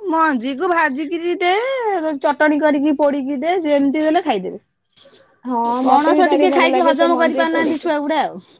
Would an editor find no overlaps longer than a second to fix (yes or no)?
no